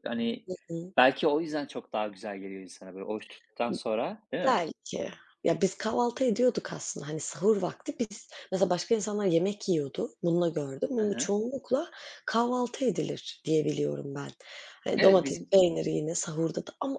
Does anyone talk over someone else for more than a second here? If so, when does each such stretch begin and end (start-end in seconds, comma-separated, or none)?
none